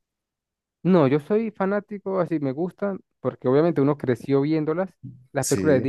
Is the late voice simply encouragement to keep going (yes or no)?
yes